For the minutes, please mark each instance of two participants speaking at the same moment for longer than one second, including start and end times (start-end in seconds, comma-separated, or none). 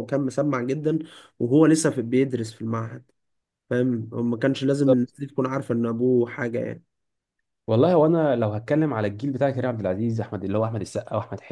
none